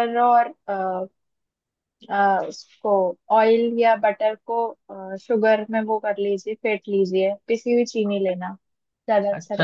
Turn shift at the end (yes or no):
yes